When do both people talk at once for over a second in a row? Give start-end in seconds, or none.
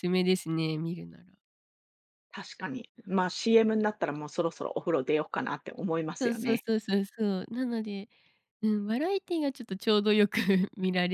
none